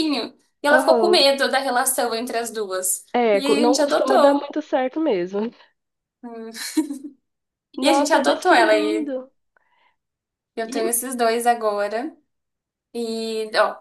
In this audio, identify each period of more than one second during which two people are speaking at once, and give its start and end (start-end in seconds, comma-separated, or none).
3.1-4.5, 7.8-9.1